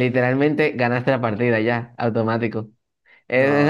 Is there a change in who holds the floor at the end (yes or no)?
no